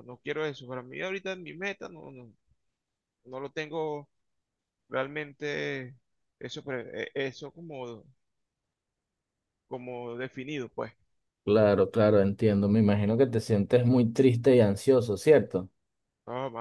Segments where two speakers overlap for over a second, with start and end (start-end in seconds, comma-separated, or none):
none